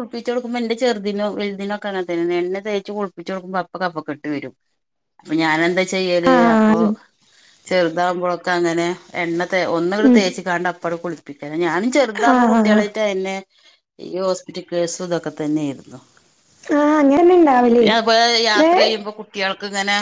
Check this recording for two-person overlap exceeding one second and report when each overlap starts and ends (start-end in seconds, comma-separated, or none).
none